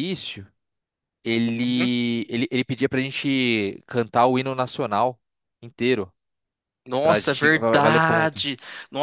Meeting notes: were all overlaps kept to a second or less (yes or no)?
no